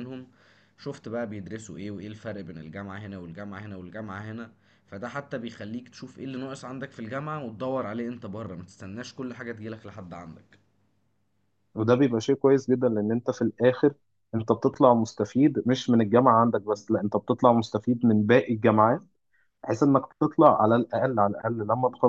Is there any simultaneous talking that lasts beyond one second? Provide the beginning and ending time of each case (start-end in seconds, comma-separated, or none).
none